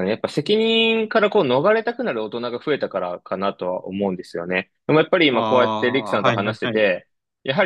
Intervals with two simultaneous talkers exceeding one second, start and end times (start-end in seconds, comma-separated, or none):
5.3-6.8